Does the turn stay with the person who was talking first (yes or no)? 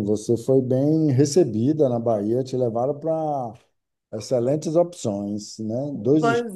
no